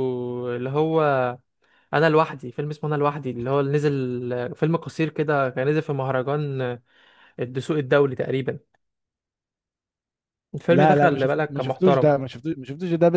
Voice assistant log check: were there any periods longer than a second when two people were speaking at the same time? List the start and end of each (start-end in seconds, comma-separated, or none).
10.7-12.1